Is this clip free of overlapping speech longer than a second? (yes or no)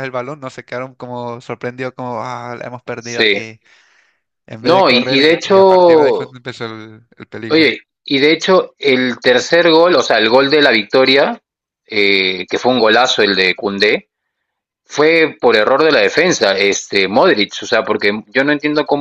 no